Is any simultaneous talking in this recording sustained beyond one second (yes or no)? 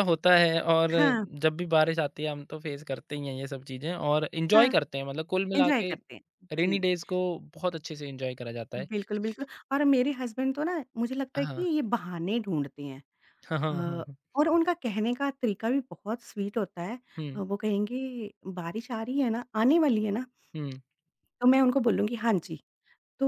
no